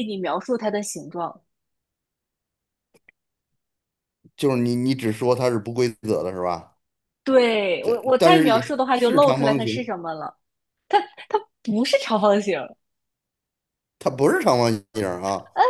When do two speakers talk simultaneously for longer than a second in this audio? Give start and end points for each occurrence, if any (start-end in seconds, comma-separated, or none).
7.8-9.9